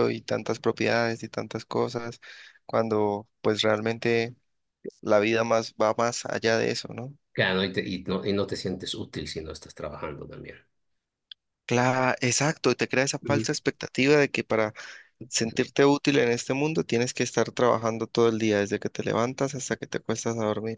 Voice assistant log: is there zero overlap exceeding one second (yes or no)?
yes